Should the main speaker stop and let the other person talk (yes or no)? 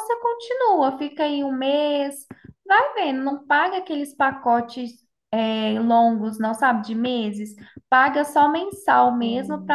no